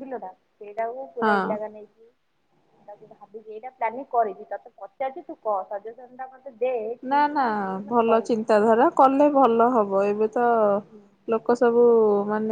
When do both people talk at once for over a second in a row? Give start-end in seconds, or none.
none